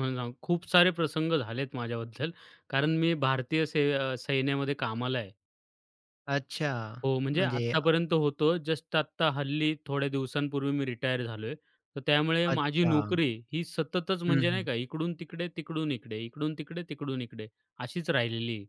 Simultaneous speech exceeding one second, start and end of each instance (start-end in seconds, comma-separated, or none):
none